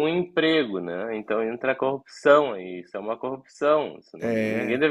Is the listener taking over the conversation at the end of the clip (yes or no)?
no